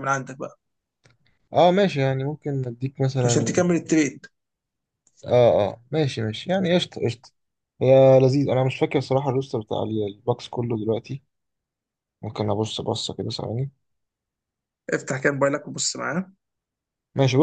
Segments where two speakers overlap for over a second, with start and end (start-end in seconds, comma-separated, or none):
none